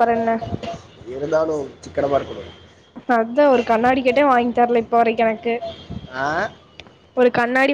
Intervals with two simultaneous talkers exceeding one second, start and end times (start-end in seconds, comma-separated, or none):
none